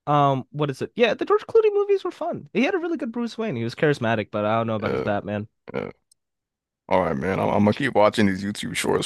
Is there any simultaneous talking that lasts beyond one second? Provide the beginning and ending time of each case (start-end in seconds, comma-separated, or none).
none